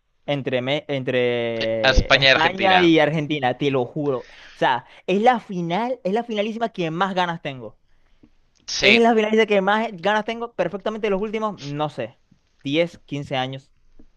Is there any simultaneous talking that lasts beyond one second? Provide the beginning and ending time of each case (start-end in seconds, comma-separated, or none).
1.6-2.9